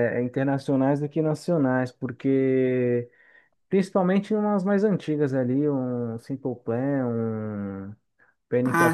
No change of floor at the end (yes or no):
yes